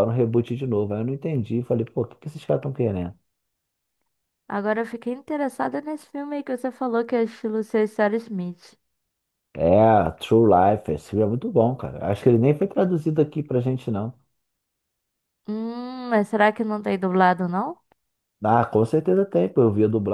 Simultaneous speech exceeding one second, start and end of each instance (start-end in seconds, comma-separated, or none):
none